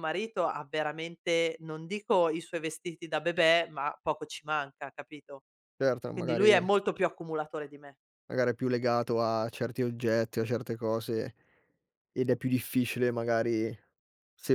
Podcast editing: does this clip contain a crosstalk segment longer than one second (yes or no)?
no